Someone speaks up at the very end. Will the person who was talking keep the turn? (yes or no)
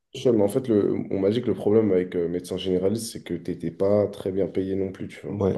no